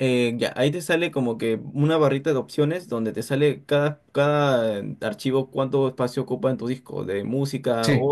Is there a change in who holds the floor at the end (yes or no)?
no